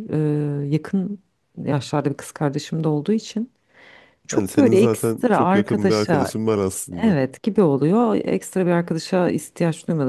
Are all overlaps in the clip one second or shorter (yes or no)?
no